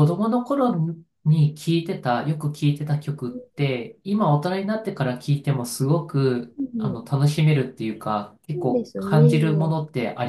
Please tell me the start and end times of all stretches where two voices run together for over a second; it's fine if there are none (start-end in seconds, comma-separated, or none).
8.5-9.8